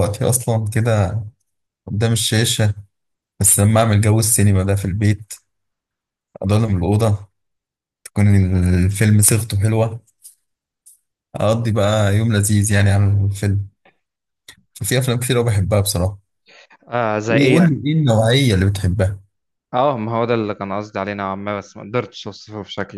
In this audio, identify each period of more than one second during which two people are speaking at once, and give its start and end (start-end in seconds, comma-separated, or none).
none